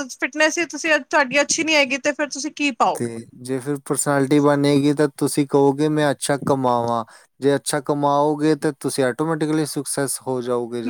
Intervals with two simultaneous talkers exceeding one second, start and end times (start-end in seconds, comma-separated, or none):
none